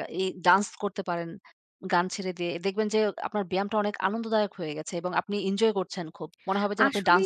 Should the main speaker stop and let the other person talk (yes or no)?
yes